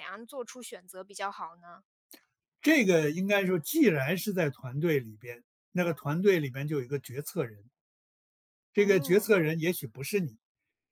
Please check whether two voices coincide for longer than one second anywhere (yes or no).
no